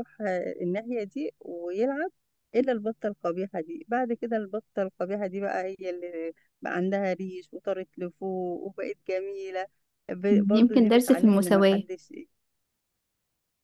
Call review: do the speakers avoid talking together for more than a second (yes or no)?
no